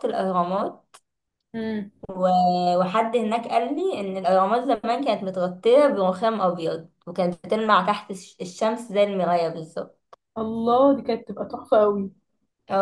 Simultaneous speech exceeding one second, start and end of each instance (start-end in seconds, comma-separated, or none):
none